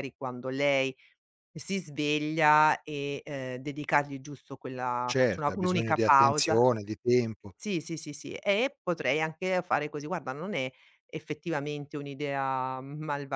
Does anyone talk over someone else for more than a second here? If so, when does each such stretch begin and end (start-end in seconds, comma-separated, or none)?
5.0-6.6